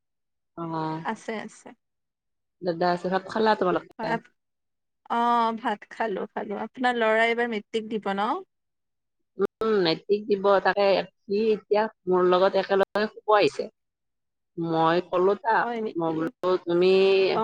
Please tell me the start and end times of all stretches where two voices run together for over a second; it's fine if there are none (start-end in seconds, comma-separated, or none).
none